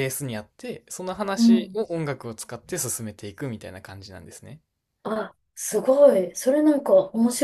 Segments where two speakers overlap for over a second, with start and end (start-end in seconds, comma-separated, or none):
none